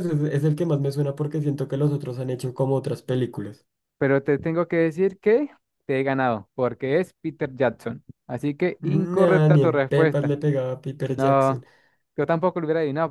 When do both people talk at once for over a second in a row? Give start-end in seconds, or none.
9.1-10.3